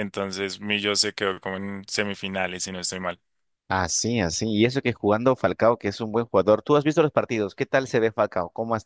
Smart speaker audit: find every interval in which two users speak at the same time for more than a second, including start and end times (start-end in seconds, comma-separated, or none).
none